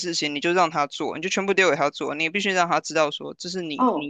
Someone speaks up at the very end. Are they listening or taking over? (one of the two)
listening